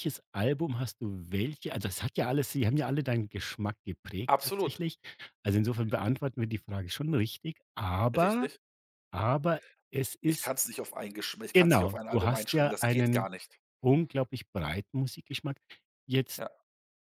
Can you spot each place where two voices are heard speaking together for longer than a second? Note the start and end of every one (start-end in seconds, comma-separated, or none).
11.5-13.3